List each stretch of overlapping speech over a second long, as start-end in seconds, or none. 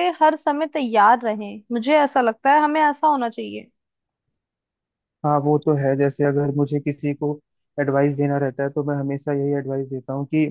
none